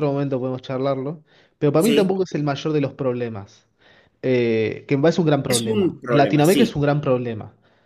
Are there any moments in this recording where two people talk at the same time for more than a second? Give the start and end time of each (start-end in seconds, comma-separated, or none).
5.5-6.7